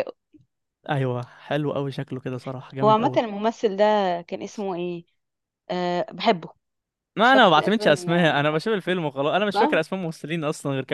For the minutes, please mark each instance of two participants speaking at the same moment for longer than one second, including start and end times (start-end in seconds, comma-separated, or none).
7.2-8.6